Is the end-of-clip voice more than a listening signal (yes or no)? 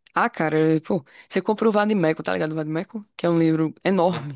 yes